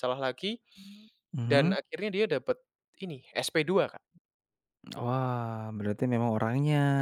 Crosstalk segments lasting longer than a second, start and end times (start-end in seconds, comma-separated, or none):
none